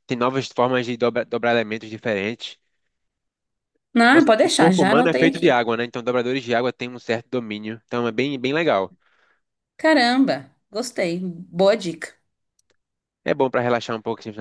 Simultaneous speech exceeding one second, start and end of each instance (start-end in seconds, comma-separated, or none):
4.1-5.6